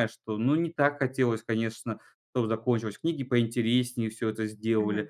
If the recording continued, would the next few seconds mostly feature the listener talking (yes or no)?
yes